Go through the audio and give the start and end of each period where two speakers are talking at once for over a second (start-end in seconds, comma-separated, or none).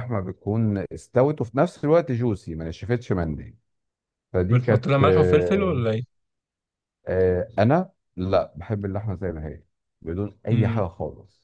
4.5-5.8